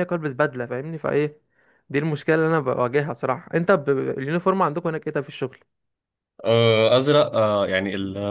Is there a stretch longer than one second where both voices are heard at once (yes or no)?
no